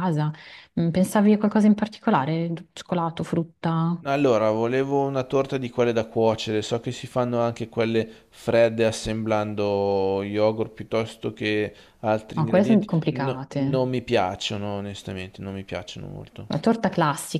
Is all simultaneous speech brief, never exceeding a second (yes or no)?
no